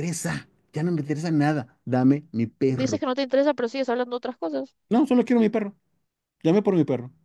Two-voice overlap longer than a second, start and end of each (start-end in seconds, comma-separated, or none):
none